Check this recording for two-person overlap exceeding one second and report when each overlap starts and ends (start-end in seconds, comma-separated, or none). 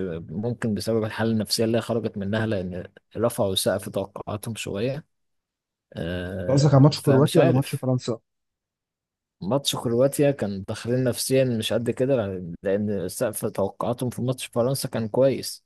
6.5-7.8